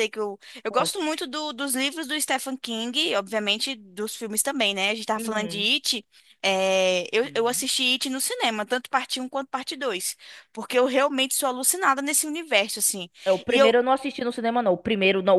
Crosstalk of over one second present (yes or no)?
no